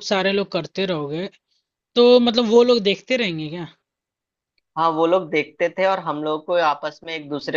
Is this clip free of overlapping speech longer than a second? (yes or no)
yes